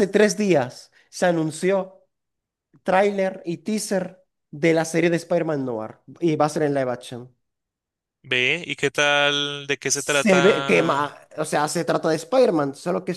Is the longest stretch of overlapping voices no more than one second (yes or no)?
no